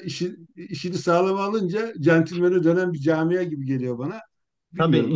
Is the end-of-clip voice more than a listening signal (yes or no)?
yes